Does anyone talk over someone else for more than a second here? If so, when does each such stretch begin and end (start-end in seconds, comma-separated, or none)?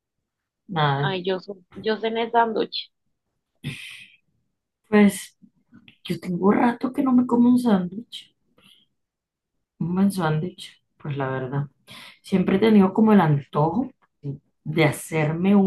none